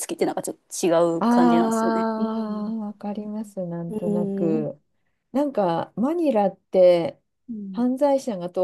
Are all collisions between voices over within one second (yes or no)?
no